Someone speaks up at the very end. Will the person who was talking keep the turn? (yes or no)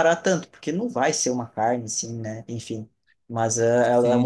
yes